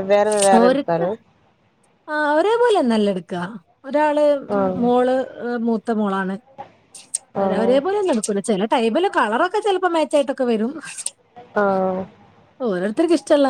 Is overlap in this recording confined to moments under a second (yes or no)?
yes